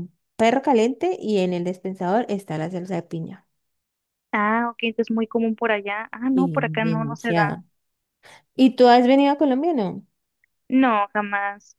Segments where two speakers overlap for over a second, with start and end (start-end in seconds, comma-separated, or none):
6.3-7.6